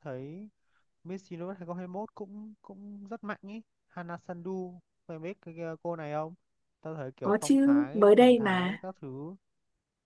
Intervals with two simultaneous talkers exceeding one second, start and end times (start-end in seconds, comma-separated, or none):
7.2-8.8